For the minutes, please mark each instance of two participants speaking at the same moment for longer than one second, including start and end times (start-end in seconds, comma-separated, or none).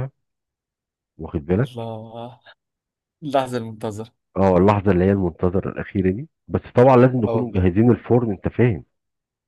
none